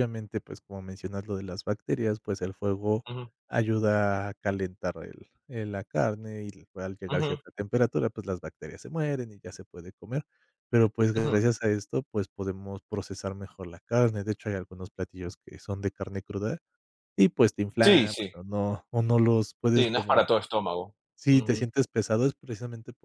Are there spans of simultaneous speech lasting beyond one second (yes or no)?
no